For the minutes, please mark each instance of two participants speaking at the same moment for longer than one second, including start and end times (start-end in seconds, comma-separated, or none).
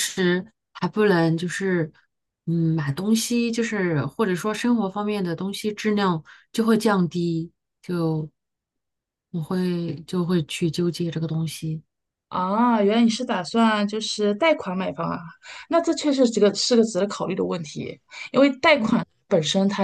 none